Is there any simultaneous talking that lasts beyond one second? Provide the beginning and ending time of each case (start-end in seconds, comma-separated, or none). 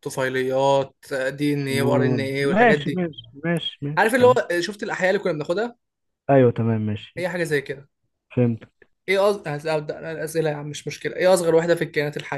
1.7-3.0